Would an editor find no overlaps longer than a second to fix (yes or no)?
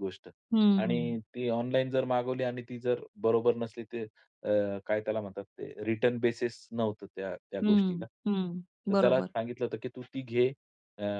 yes